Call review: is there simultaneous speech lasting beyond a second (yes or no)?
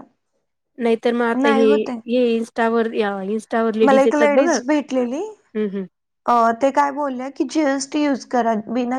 no